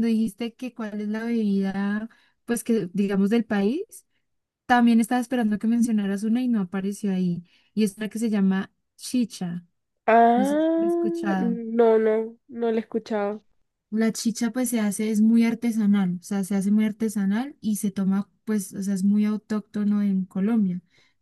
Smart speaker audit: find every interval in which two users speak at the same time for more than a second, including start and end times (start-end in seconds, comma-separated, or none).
10.3-11.6